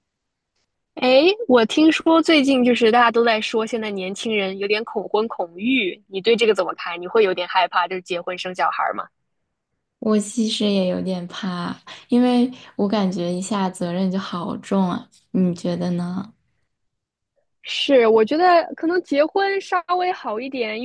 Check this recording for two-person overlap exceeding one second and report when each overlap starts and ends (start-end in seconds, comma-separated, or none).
none